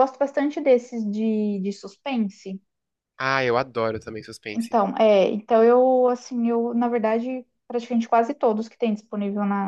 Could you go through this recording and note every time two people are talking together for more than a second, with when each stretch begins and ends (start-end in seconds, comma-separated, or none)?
none